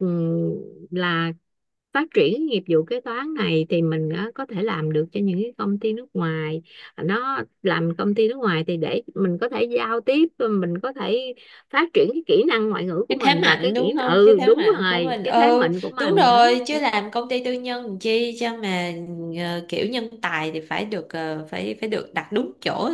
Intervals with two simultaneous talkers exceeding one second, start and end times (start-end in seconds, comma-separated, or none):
13.1-16.4